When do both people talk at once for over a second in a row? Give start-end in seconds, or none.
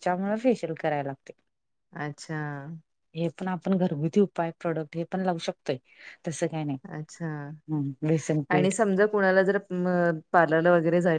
none